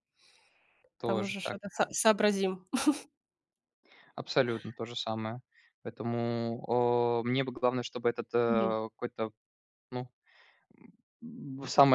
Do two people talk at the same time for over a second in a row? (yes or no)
no